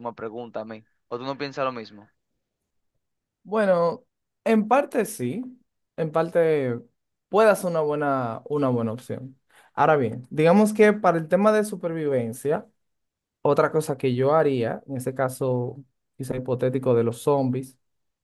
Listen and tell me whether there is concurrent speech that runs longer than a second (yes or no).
no